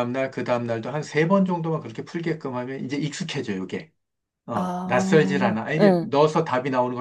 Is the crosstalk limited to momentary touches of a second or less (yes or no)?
no